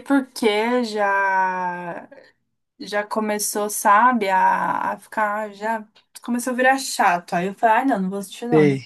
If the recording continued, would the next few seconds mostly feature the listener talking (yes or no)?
no